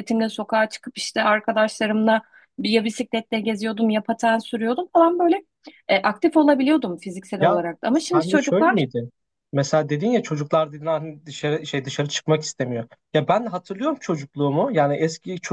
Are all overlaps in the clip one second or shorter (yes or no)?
no